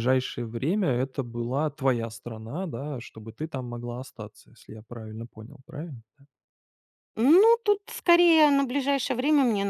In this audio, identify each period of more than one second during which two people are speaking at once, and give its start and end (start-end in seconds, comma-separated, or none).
none